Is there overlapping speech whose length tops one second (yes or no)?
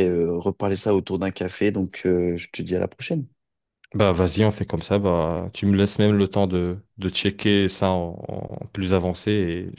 no